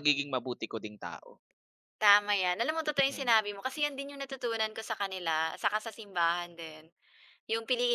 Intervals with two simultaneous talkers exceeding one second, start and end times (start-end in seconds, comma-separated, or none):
none